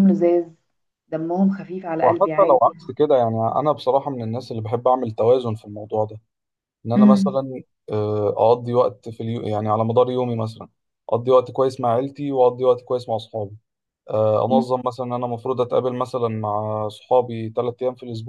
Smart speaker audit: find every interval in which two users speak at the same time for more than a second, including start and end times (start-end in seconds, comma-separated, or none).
none